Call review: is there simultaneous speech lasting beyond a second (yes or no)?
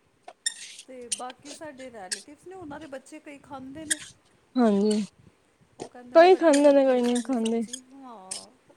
yes